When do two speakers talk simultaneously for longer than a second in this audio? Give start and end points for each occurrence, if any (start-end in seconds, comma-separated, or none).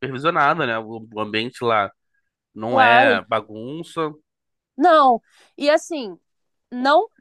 none